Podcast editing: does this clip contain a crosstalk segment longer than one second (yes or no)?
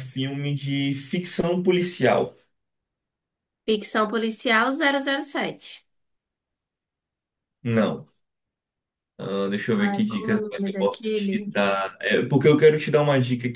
yes